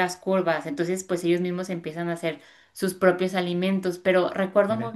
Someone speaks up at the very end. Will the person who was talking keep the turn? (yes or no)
yes